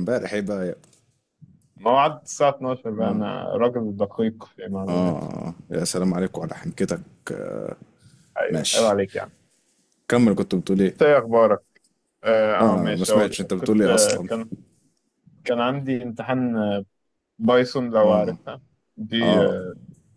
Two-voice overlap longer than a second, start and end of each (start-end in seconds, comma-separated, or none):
12.6-14.3